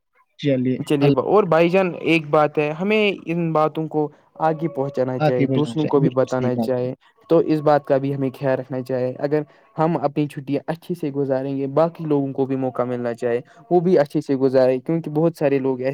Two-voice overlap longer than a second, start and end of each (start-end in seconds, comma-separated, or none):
5.2-6.8